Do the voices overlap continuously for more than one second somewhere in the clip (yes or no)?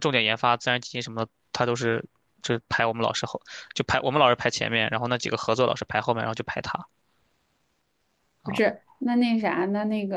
no